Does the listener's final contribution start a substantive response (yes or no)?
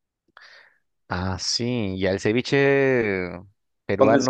no